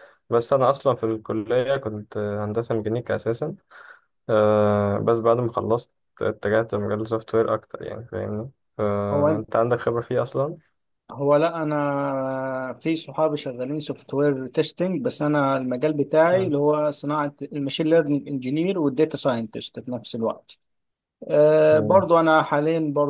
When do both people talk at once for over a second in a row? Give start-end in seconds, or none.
none